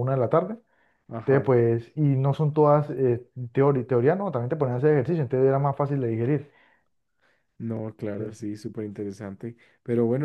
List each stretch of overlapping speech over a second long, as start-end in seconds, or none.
none